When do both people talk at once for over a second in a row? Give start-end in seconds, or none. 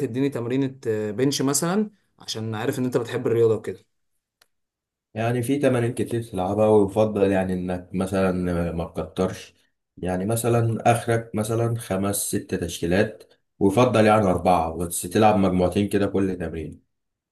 none